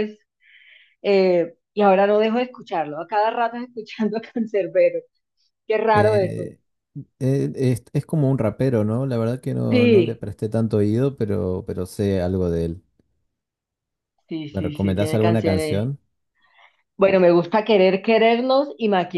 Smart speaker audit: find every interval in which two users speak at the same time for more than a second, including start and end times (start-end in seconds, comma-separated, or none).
14.5-15.8